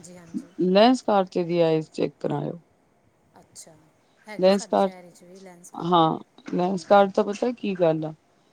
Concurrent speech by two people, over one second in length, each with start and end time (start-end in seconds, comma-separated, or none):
none